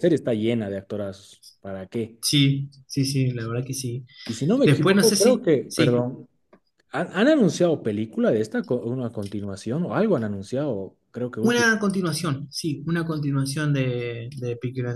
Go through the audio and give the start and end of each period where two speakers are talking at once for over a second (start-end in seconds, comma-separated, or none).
4.7-6.1